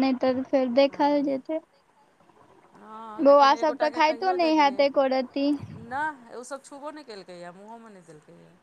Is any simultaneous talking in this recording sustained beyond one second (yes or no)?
yes